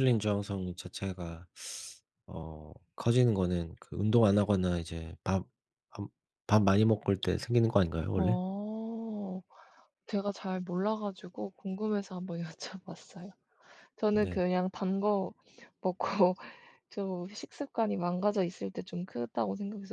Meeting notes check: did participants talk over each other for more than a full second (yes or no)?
no